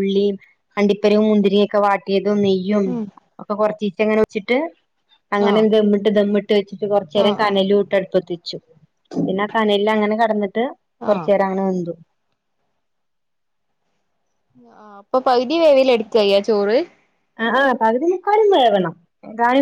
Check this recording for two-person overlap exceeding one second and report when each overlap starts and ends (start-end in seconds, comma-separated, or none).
none